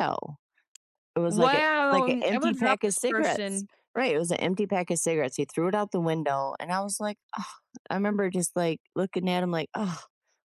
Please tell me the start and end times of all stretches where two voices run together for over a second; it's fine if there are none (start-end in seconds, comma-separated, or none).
1.3-3.7